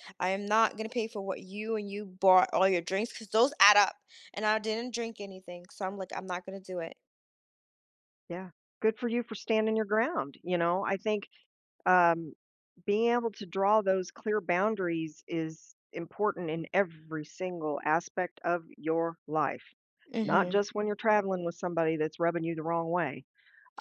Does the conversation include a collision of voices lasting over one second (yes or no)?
no